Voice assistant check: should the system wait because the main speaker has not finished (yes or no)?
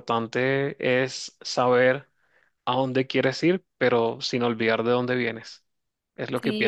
no